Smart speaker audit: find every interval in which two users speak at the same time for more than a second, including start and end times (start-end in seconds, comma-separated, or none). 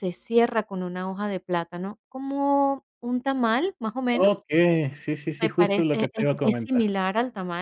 5.4-7.0